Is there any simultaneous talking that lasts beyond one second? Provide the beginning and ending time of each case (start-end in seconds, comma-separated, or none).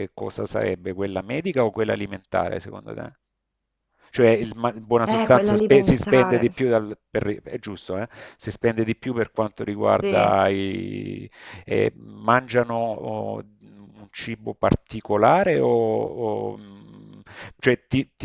5.0-6.5